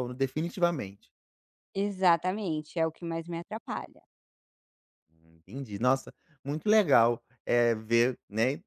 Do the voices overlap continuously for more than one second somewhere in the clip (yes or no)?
no